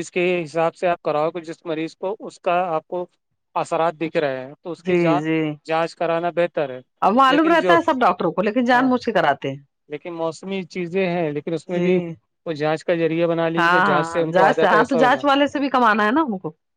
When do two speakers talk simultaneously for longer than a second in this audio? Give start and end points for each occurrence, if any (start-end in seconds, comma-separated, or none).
13.6-15.2